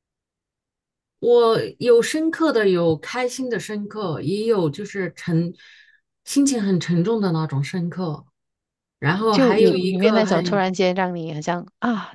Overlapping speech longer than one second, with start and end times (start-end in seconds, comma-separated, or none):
9.3-10.5